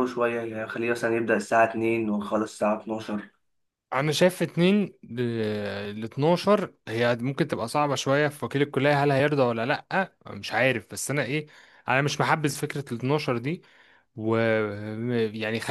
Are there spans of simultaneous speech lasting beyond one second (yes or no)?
no